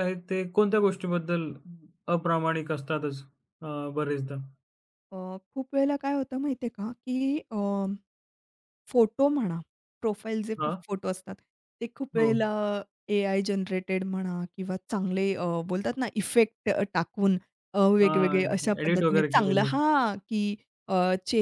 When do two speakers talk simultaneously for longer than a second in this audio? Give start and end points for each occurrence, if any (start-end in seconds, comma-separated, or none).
18.1-19.8